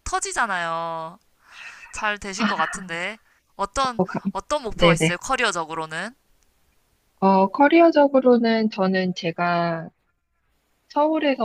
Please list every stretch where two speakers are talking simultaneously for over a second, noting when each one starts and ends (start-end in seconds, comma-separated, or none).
none